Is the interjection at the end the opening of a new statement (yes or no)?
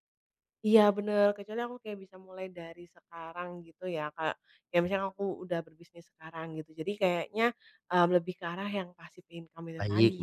yes